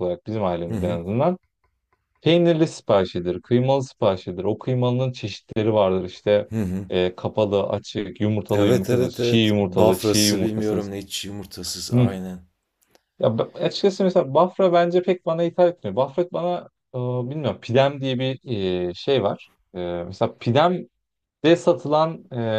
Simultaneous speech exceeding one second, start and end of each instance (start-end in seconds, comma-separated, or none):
8.5-10.9